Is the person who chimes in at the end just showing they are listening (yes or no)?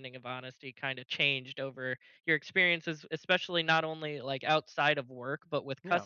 yes